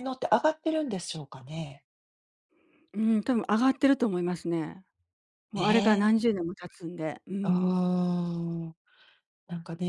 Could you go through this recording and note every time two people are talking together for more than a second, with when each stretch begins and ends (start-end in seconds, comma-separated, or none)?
none